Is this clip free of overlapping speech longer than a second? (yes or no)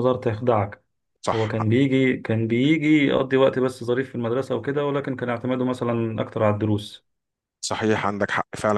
yes